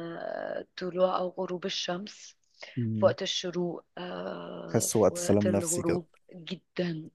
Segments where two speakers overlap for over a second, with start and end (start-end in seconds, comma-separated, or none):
4.7-6.0